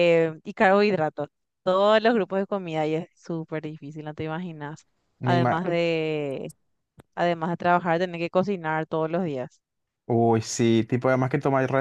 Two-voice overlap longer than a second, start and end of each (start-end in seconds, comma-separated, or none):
none